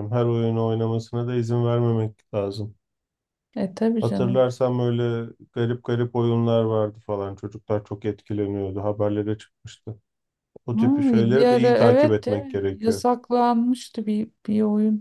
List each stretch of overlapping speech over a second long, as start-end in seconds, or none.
10.8-13.1